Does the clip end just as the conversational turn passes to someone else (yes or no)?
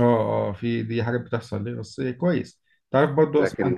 no